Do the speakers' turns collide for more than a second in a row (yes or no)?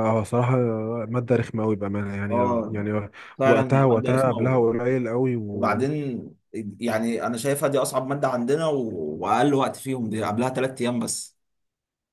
yes